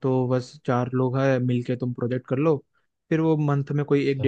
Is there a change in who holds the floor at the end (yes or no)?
no